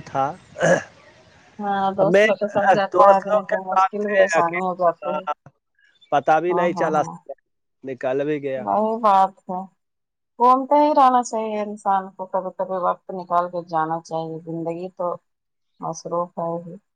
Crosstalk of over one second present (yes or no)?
yes